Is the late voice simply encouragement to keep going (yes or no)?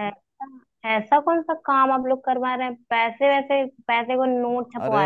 no